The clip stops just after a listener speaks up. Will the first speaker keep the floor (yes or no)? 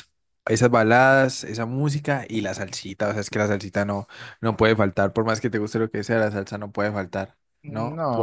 no